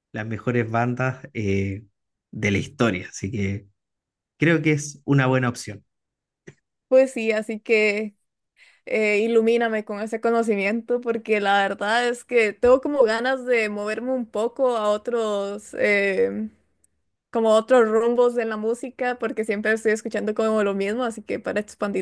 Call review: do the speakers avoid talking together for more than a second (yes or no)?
yes